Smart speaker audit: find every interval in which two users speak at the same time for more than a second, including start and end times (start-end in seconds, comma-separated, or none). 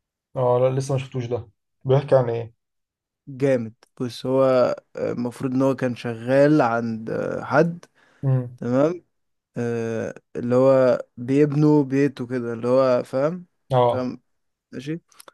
none